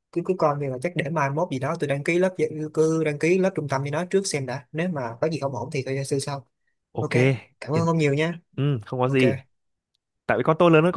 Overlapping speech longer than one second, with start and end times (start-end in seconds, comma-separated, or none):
none